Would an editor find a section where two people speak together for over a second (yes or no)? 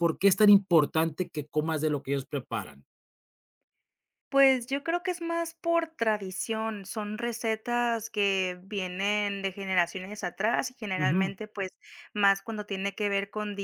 no